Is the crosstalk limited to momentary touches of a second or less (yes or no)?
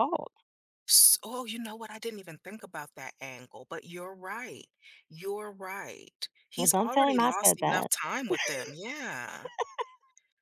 no